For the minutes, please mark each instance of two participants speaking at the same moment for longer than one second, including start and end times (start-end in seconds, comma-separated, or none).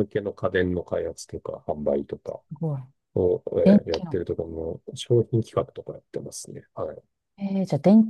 none